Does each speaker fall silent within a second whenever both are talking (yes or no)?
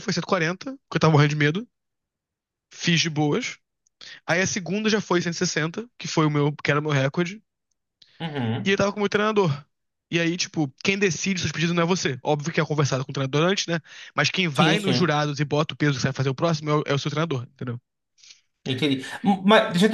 yes